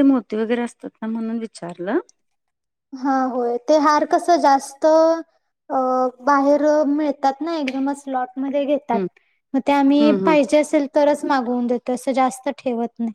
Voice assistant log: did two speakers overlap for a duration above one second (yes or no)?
no